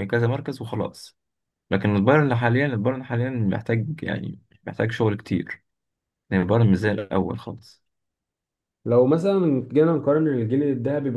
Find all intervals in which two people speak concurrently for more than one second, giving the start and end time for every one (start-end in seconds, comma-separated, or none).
none